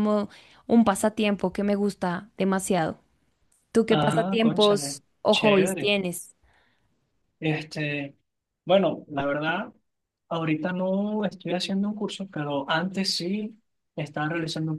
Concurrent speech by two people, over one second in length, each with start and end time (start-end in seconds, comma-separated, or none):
3.9-5.9